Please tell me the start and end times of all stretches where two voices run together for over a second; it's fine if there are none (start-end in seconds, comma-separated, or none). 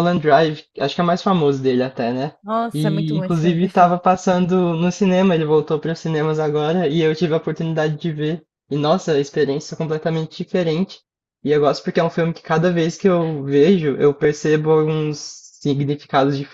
2.7-4.0